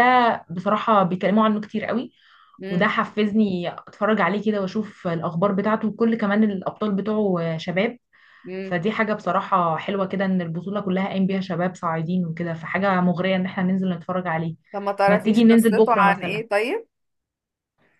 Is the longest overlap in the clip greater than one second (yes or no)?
yes